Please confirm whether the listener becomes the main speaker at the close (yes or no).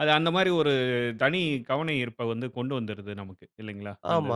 yes